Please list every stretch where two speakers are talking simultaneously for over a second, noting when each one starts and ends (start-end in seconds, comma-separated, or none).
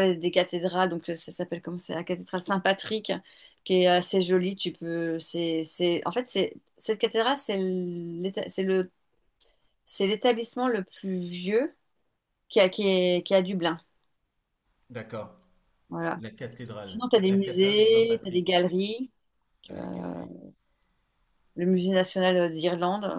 16.8-18.6